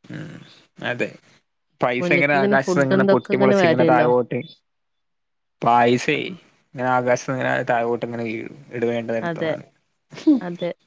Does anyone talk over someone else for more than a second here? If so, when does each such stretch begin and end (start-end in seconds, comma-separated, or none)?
2.0-4.1